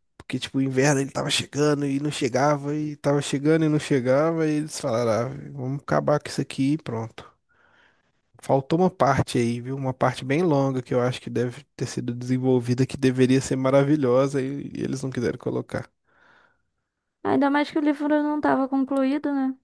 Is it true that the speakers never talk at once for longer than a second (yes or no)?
yes